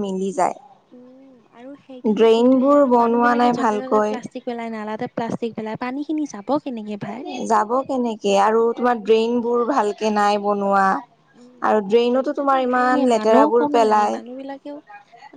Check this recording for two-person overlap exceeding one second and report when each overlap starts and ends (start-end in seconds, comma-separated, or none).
2.2-4.1, 11.7-14.1